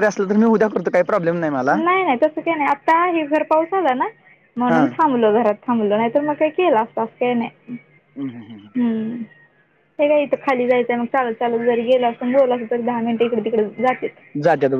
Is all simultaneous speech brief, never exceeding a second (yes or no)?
yes